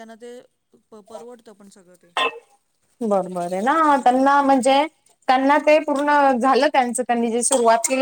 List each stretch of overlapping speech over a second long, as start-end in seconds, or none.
none